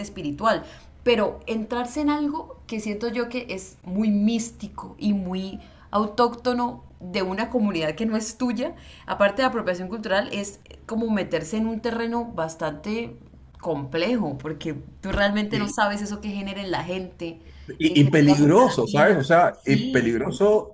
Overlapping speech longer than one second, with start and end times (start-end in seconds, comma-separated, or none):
17.9-20.1